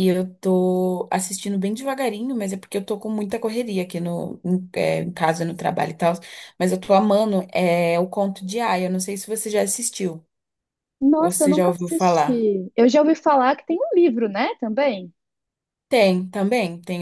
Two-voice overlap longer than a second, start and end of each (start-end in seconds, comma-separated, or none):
11.2-12.5